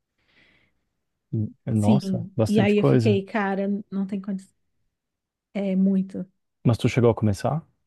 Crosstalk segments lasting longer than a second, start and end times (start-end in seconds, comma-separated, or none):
1.7-3.2